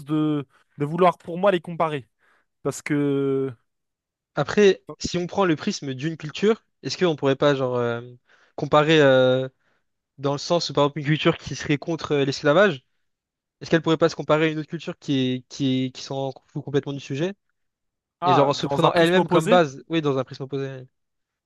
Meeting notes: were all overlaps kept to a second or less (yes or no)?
no